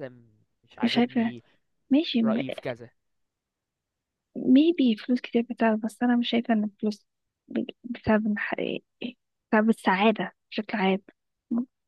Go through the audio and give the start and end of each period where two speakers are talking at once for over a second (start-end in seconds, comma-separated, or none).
none